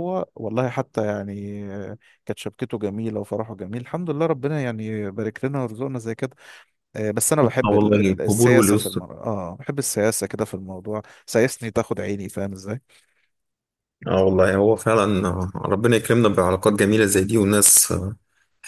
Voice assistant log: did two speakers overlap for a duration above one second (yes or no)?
yes